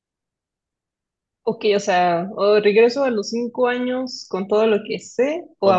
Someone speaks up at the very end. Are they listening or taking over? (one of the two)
taking over